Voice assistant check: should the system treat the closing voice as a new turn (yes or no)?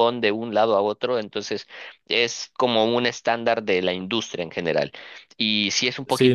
yes